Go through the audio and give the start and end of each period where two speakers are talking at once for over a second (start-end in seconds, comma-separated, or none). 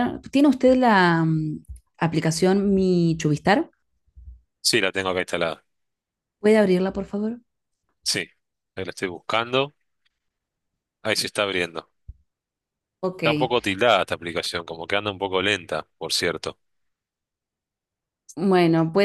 none